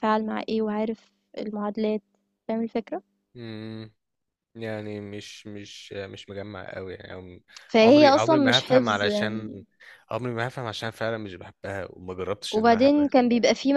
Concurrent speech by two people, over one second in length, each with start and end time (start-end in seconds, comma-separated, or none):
7.8-9.6